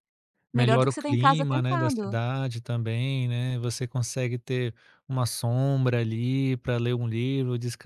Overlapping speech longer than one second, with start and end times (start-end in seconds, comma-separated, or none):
0.5-2.1